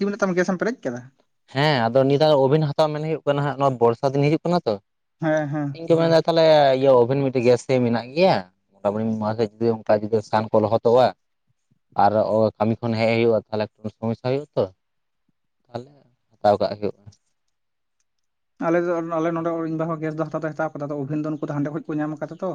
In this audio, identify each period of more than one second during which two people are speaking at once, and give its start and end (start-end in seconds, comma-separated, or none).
none